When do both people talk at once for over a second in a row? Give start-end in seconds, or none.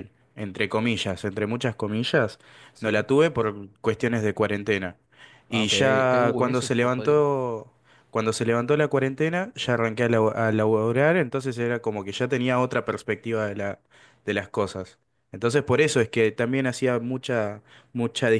5.5-7.2